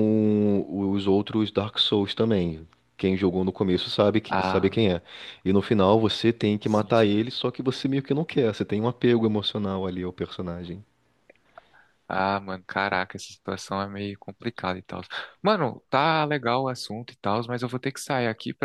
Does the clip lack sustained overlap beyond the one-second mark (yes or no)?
yes